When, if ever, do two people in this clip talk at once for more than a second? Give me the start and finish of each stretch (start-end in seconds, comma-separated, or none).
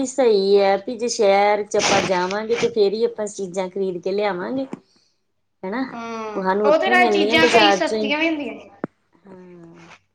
6.4-8.1